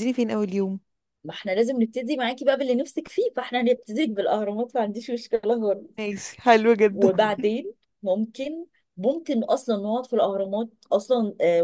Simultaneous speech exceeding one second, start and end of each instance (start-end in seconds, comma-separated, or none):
none